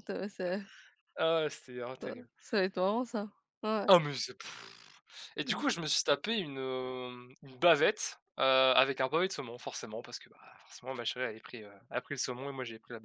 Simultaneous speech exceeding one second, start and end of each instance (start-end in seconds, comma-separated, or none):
none